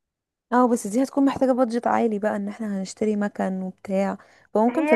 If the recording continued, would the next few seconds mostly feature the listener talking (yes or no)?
yes